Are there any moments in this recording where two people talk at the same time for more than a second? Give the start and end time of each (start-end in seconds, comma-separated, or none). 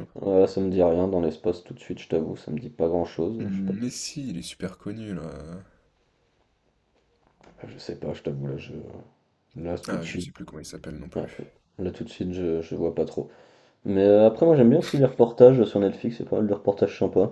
none